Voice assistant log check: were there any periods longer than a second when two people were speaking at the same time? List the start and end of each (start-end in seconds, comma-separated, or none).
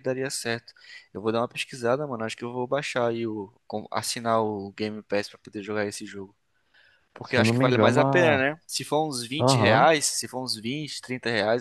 7.2-8.5